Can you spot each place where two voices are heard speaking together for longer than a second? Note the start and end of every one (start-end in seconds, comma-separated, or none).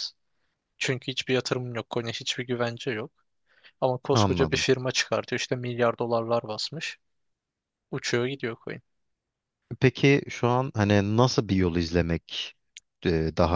none